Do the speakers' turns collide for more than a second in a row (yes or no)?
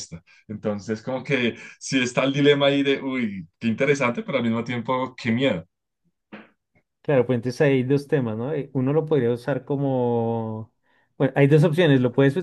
no